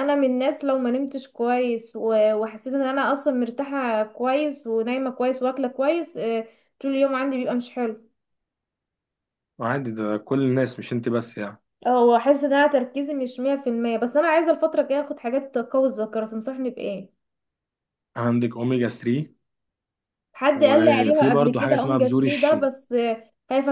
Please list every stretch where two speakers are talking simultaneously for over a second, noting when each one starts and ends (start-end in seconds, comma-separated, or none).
20.5-22.7